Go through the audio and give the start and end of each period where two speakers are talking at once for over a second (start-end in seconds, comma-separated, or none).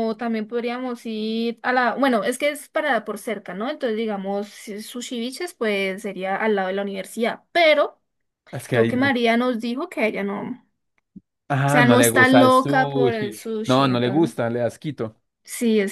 11.7-14.3